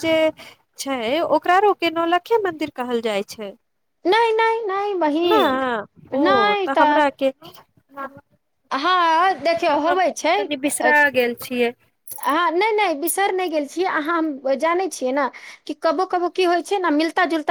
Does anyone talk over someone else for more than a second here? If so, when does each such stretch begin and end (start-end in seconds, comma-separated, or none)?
none